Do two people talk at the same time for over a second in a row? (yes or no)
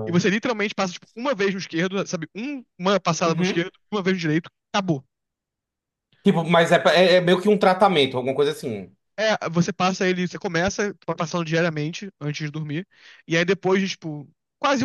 no